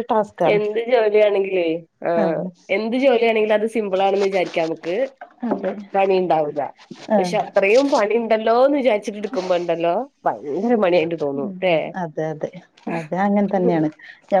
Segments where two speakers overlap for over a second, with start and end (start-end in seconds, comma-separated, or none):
none